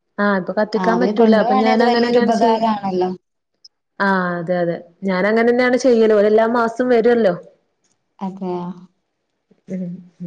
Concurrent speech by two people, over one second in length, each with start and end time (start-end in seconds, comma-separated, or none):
0.8-2.5